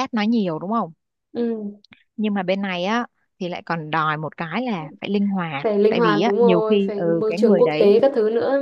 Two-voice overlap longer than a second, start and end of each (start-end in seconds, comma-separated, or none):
5.6-8.0